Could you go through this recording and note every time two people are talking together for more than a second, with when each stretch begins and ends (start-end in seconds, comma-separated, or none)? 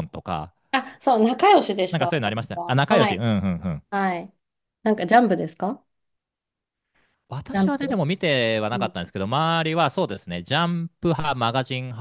1.9-3.2